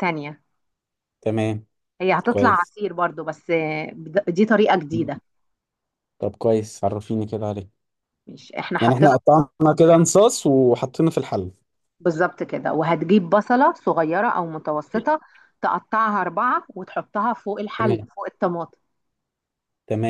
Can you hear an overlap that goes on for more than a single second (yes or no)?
no